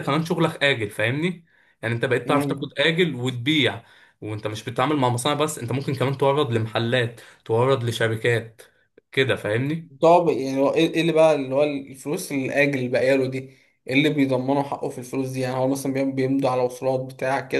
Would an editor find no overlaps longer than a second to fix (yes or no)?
yes